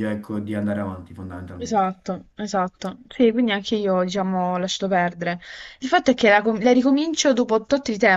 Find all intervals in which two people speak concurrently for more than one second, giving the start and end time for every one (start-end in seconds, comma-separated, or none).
none